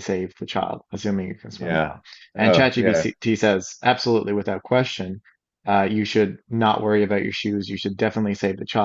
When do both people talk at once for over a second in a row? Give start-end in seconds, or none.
1.6-3.1